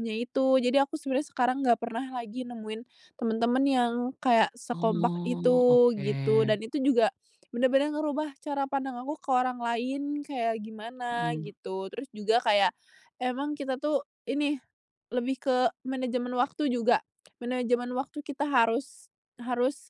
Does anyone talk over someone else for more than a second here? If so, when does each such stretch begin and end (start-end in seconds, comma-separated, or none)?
4.7-6.0